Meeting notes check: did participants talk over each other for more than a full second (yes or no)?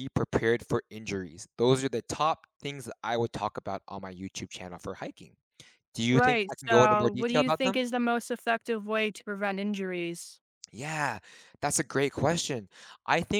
yes